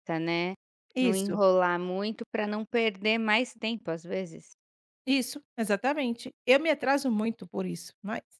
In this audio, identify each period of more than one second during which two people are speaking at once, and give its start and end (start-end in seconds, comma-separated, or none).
none